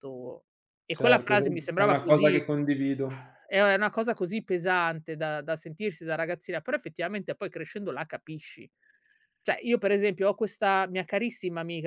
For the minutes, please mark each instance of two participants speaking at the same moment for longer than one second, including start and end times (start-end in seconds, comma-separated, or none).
0.9-2.4